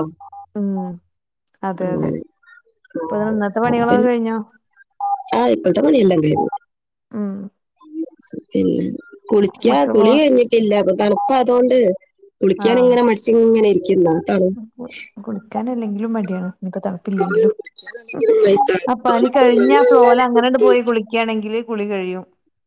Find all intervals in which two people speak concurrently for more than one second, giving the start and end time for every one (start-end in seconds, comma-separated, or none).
18.9-20.9